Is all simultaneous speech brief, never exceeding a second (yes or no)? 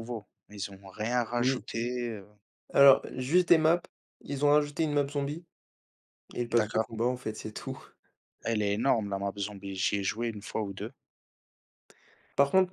yes